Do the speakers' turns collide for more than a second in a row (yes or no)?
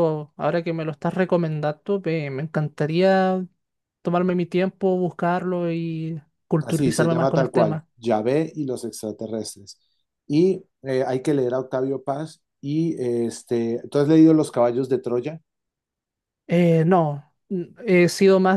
yes